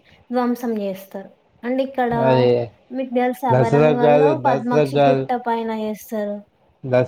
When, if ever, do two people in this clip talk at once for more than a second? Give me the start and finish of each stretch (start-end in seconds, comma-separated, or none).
3.5-5.2